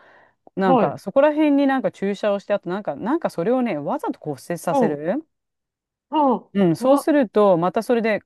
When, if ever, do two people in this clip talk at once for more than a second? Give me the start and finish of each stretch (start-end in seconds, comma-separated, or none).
none